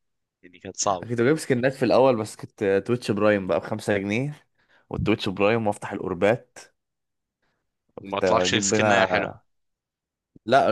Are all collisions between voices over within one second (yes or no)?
no